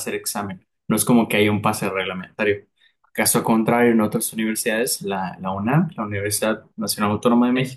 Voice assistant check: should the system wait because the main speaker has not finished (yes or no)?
yes